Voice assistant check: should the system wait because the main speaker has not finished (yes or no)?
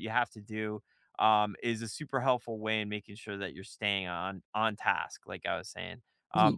yes